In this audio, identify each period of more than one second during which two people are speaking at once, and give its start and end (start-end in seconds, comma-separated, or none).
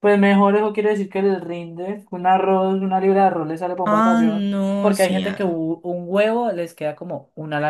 3.9-5.6